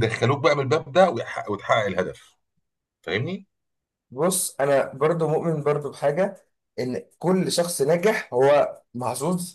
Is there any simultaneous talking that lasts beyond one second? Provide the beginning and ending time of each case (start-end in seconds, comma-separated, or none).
none